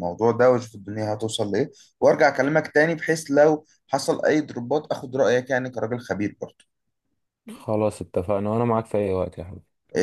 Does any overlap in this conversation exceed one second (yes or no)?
no